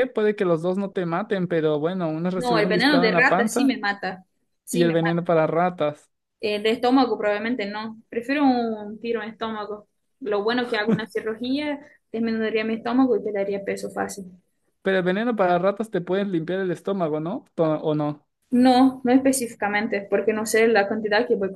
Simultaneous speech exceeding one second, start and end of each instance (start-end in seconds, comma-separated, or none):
2.4-3.8